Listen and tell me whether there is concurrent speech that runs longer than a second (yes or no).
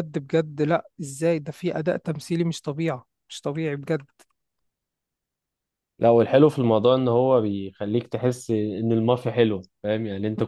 no